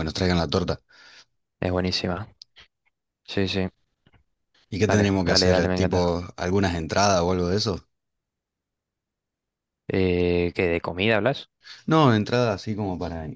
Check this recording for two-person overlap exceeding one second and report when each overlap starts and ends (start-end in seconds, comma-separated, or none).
4.9-6.1